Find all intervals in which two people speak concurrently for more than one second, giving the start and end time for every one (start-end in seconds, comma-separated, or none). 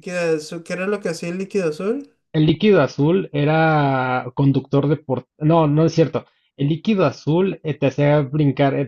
none